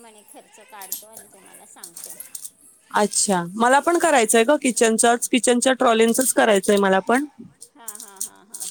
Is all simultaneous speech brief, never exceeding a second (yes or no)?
no